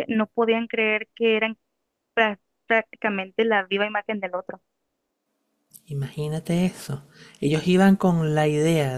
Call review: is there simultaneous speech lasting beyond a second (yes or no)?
no